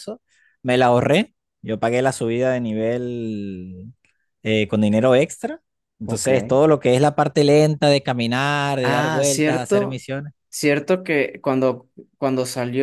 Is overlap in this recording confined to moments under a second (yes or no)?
no